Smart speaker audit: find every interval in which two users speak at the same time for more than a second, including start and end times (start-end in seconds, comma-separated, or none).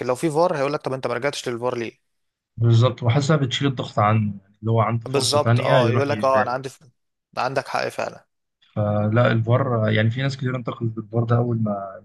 5.1-6.6